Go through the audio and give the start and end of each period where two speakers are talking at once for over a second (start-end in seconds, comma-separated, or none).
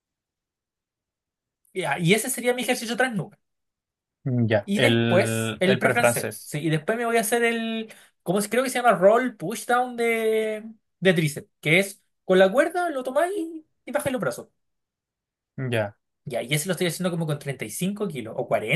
4.6-6.5